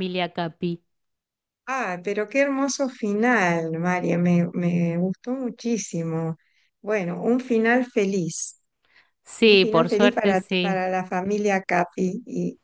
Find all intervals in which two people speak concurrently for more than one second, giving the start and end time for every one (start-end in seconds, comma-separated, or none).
9.4-10.8